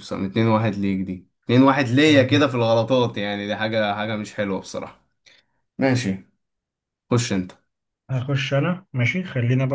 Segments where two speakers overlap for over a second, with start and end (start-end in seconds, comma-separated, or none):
none